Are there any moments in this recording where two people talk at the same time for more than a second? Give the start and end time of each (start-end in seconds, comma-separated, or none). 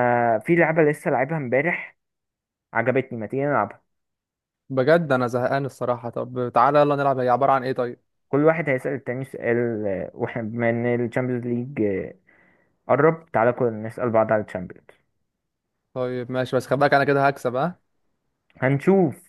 none